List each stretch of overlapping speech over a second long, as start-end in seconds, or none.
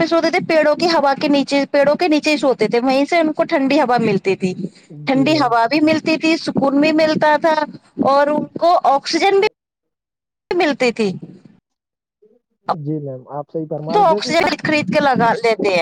none